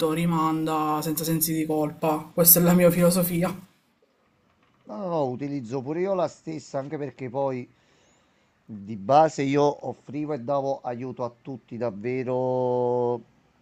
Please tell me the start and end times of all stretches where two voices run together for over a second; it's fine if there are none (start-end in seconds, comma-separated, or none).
none